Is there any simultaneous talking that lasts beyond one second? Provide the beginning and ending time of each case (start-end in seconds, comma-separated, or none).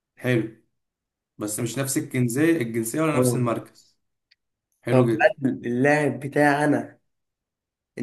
none